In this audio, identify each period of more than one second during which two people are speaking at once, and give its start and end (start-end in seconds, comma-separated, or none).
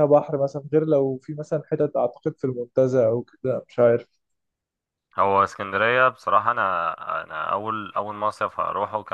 none